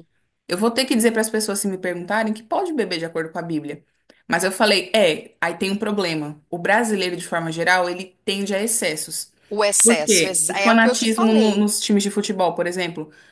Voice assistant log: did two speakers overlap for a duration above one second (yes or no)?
yes